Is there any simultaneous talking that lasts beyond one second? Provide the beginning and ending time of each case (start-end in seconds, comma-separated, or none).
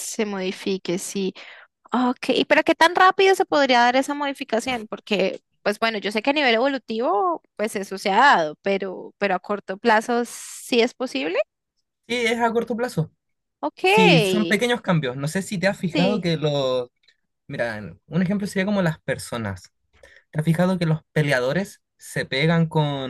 none